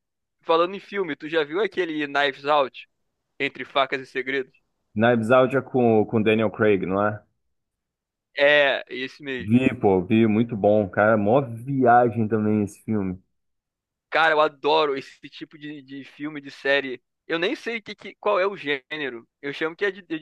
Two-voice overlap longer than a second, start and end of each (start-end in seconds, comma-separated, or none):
none